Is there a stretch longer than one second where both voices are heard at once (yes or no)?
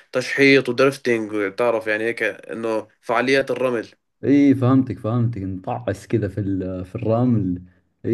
no